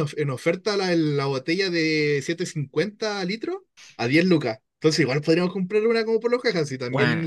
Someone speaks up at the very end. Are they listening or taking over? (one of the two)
taking over